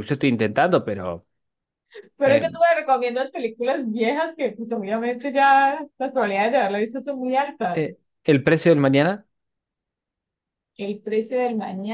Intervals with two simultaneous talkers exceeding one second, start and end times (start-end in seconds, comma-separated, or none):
none